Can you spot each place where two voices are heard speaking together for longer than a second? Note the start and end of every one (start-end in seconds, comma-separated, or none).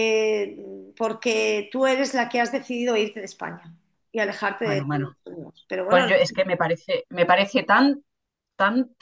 none